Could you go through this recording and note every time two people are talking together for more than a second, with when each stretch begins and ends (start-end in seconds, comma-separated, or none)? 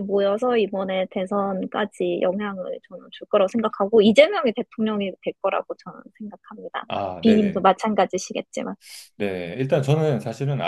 none